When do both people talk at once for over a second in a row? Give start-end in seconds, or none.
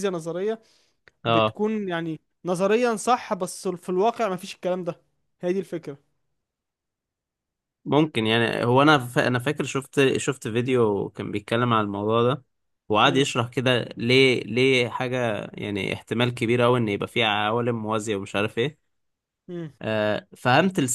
none